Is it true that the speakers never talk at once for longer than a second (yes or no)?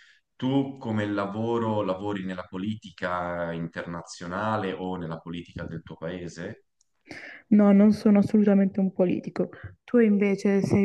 yes